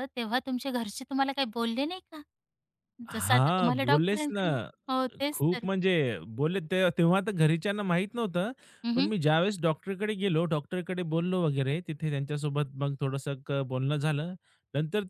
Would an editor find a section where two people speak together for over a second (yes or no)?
yes